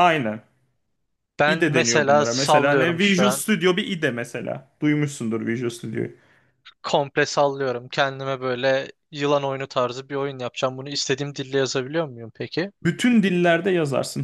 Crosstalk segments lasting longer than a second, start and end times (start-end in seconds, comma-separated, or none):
1.4-3.4